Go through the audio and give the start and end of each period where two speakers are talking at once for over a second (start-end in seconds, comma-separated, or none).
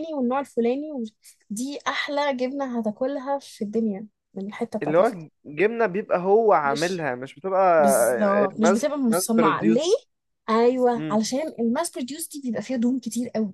8.6-9.8